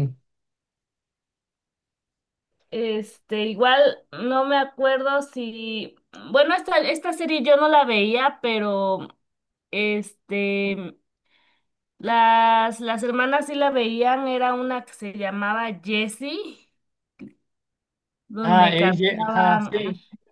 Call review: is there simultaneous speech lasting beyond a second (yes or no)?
yes